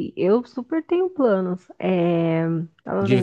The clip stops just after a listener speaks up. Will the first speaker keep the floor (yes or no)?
no